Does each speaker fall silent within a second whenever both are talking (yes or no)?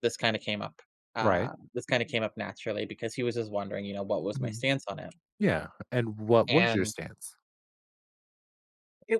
yes